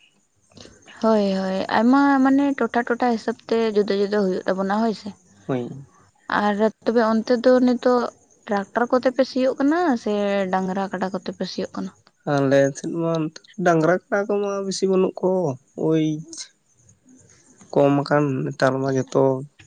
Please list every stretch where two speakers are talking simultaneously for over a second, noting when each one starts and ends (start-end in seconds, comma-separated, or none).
none